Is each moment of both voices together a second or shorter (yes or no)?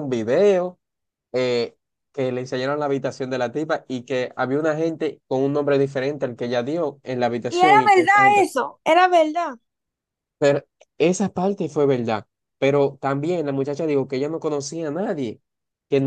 yes